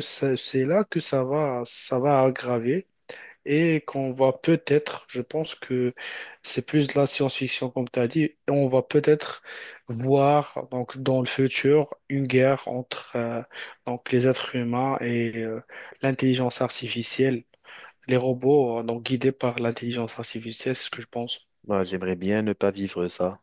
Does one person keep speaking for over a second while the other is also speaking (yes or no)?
no